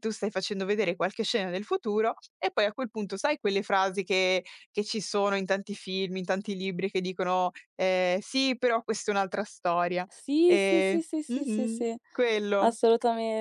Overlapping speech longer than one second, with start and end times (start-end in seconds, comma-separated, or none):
10.5-12.0